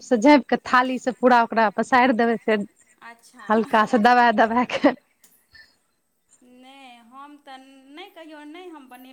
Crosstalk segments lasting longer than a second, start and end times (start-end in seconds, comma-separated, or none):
none